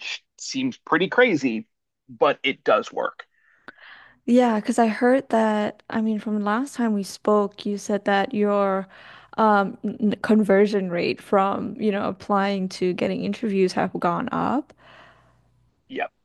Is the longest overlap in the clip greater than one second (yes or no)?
no